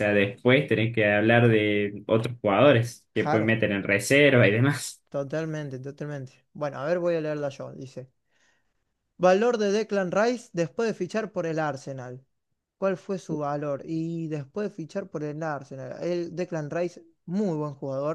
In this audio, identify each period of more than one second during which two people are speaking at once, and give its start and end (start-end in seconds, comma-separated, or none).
none